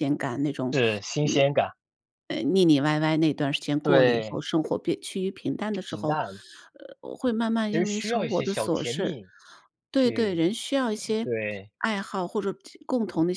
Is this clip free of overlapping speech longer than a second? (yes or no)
no